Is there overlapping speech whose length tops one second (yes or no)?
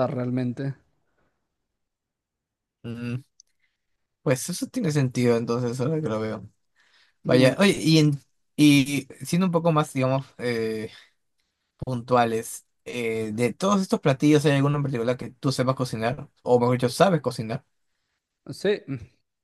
no